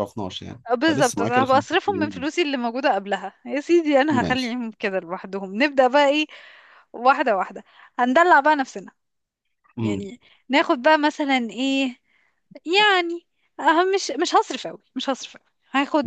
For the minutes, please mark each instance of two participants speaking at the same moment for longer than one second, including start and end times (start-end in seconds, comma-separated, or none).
0.7-2.3